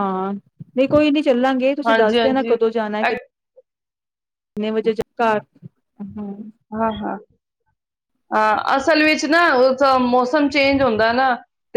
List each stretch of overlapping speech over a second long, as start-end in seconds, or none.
1.9-3.1